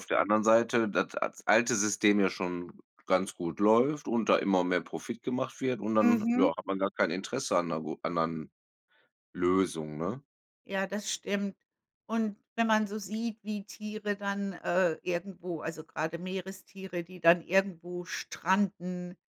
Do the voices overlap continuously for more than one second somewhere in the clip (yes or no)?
no